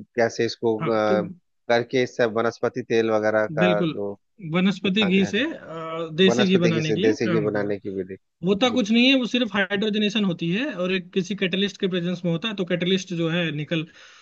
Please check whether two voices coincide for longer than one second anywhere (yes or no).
yes